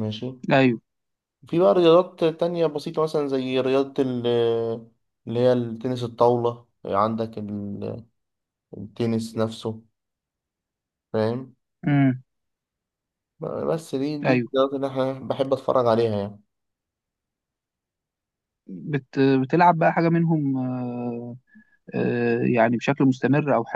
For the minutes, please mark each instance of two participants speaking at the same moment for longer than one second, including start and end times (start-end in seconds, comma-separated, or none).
none